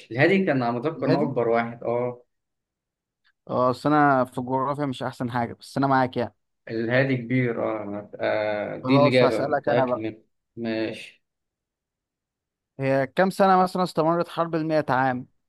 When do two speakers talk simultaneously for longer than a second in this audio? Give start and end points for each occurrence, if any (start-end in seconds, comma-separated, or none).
8.8-10.1